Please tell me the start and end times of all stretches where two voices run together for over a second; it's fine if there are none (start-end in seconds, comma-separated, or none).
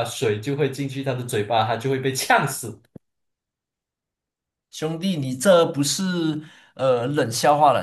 none